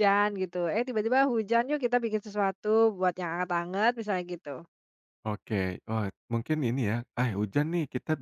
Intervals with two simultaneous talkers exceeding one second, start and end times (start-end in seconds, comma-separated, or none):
none